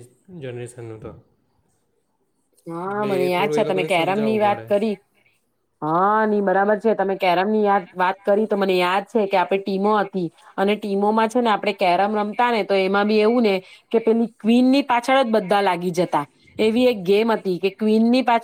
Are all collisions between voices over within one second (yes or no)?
no